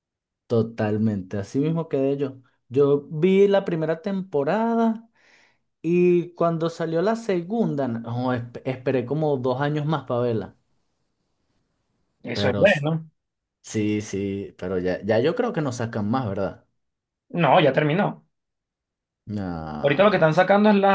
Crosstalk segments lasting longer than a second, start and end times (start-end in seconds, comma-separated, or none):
none